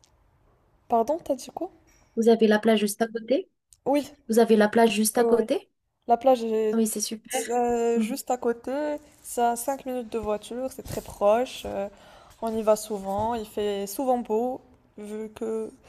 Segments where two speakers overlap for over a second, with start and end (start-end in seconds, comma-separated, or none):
none